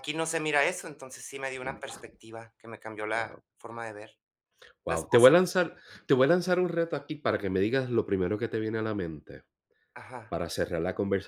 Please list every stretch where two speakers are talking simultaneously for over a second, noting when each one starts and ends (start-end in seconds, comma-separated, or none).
none